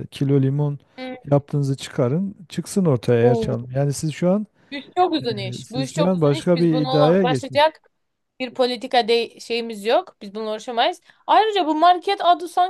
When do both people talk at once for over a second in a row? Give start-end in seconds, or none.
5.2-7.7